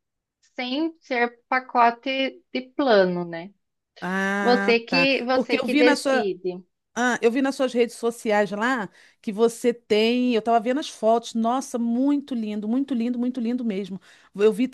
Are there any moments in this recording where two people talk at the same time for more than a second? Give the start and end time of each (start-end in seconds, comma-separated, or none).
4.4-6.3